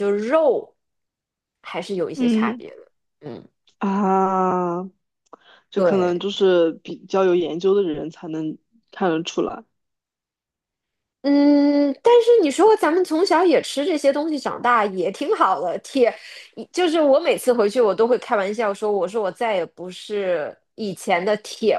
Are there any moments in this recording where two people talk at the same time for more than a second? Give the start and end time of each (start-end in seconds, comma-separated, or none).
none